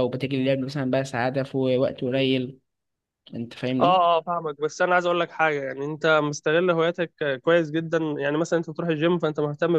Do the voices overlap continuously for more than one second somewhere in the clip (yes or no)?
no